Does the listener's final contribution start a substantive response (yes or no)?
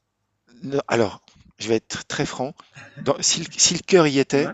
no